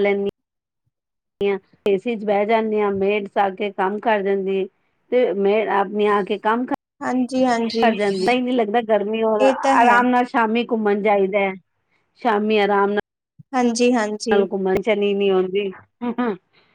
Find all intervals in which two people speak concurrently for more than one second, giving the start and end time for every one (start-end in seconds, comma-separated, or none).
none